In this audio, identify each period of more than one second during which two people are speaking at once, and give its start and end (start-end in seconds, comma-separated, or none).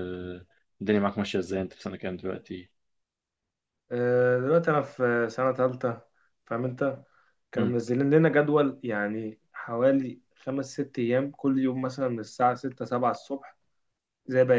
none